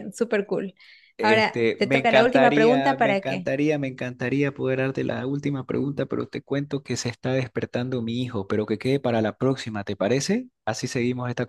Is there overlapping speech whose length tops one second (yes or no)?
yes